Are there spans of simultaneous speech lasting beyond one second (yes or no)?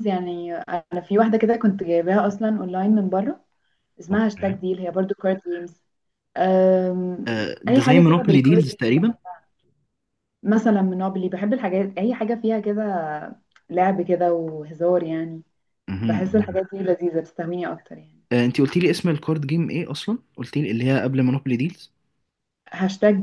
yes